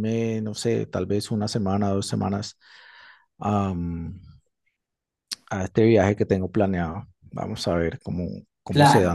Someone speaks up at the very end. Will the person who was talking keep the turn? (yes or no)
no